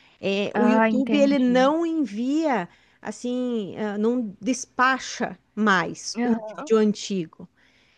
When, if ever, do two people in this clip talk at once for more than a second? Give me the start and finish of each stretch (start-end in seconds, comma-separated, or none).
0.5-1.7